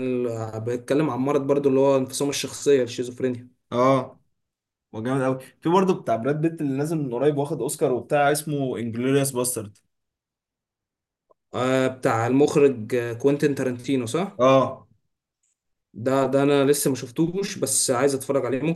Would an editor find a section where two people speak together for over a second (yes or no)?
no